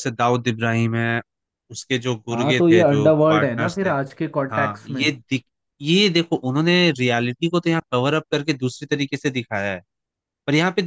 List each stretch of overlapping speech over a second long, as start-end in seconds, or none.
2.3-3.9